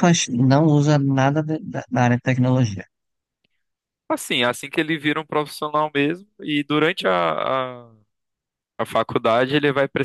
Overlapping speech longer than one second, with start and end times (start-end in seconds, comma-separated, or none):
none